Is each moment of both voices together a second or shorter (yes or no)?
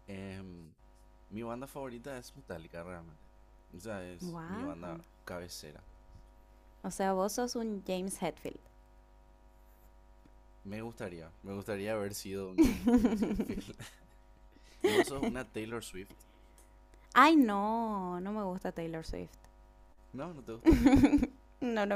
yes